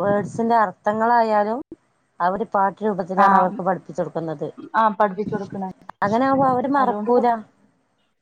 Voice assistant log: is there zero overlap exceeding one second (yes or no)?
yes